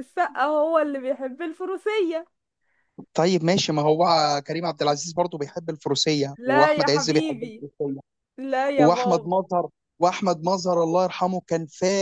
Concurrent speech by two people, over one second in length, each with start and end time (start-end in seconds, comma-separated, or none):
6.4-7.6